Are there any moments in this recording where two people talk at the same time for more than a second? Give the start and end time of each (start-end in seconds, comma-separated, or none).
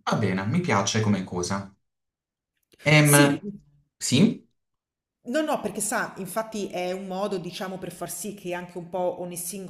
none